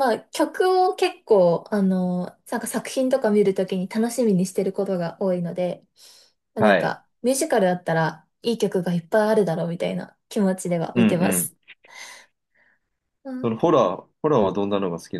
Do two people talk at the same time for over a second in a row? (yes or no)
no